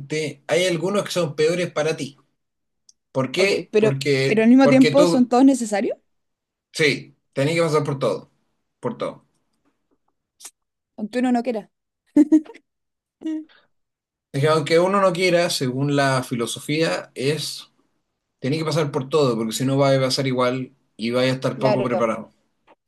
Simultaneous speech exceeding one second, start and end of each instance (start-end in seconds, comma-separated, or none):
3.4-5.3